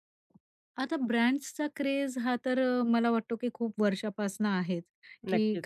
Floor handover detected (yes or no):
no